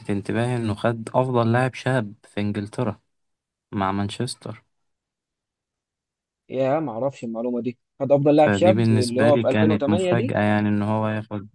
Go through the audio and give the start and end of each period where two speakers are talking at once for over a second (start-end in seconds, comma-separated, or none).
8.4-10.3